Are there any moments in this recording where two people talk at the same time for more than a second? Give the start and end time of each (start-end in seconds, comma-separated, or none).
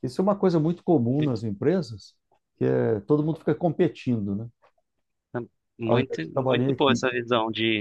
5.8-7.2